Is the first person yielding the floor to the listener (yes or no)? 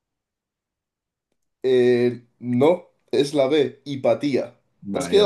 yes